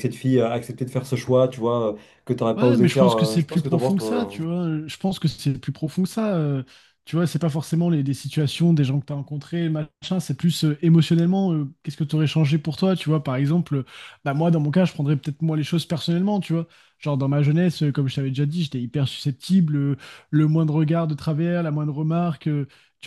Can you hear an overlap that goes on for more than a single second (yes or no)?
yes